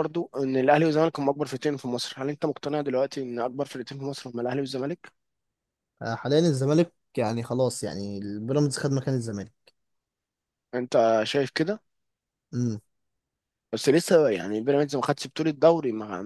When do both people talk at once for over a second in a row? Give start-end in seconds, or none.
none